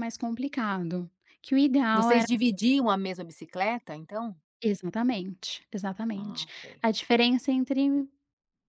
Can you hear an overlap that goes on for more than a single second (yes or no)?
no